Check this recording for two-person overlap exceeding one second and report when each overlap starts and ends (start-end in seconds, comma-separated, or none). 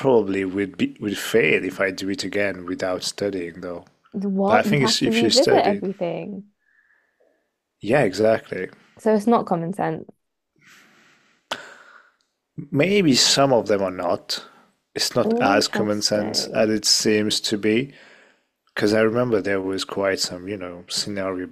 4.5-5.8, 15.2-16.7